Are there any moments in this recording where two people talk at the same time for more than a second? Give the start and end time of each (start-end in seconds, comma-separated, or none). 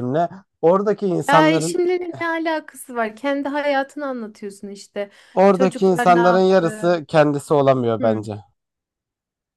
5.5-7.0